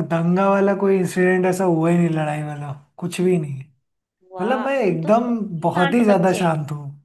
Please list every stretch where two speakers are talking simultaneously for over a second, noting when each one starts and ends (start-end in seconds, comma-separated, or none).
4.4-6.5